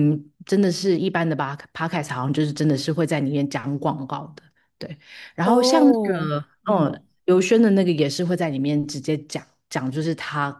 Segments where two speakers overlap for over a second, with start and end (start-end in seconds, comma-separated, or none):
5.4-6.9